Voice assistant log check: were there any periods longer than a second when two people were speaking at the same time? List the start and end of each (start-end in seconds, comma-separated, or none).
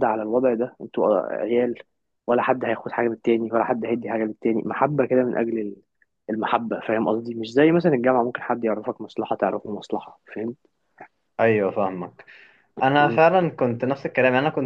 none